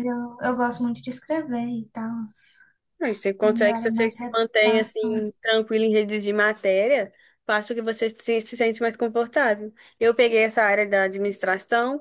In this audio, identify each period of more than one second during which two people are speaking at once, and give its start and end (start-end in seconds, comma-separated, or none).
3.4-5.2